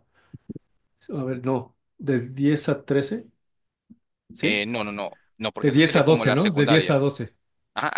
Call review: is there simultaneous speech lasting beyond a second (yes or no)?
yes